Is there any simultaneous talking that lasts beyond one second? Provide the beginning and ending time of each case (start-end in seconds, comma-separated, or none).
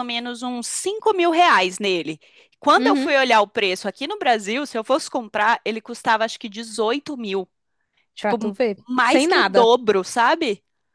8.2-9.7